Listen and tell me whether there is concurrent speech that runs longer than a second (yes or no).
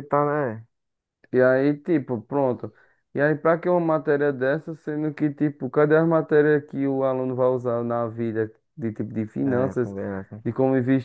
no